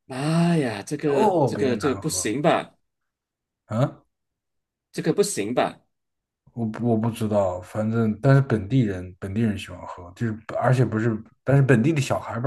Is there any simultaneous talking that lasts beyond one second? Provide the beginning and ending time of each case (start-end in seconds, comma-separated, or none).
1.0-2.3